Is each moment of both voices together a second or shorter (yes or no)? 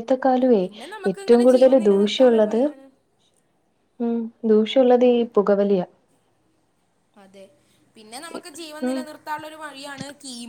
no